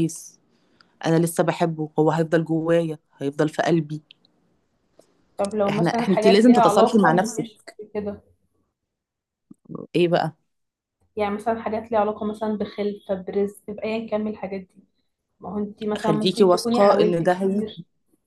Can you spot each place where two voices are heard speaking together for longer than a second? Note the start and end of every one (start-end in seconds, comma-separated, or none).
5.7-7.5, 16.0-17.6